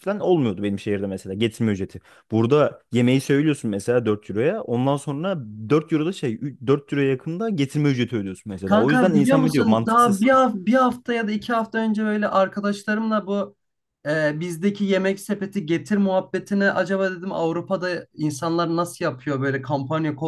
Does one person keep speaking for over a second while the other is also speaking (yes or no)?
yes